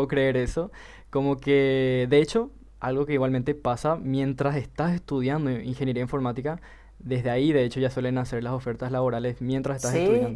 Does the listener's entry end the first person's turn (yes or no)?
yes